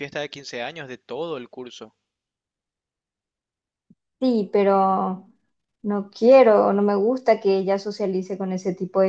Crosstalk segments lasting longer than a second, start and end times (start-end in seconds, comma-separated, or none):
none